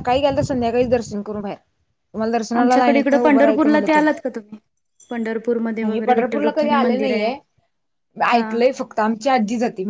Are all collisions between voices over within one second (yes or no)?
no